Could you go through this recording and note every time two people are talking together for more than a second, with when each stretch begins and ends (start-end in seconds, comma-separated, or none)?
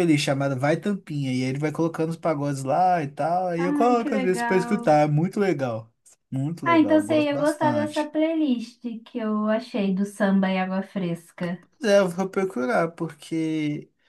3.6-5.0, 6.6-8.1